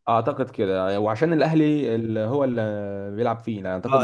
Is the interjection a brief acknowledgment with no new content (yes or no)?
no